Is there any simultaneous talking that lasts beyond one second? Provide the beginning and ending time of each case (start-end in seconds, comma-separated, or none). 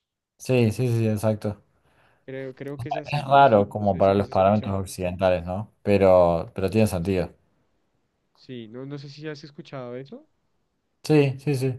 3.1-4.8